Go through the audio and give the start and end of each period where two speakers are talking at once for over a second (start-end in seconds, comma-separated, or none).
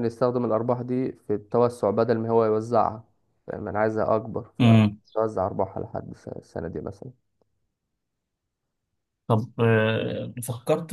none